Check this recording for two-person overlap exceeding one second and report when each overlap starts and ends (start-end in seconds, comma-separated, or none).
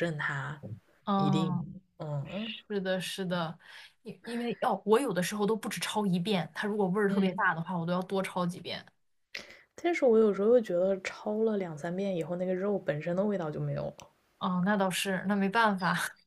none